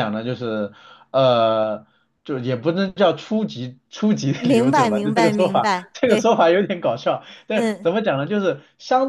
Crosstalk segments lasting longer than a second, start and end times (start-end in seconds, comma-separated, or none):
4.4-6.4